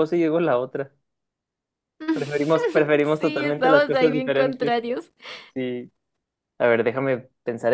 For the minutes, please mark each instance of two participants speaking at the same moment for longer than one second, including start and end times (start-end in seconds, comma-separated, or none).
3.2-4.7